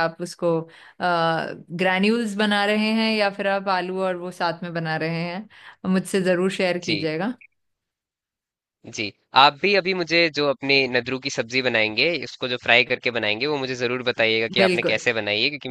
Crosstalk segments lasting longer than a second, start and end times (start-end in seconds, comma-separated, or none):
none